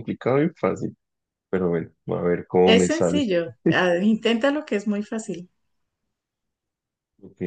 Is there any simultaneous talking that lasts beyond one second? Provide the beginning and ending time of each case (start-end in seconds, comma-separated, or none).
none